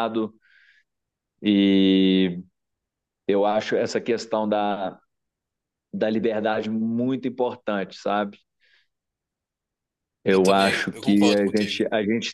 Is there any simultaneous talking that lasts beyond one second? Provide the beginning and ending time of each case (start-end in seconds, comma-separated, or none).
10.3-11.8